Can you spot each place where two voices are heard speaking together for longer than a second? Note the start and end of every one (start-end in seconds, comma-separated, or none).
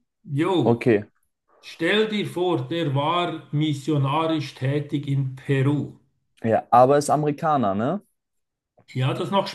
none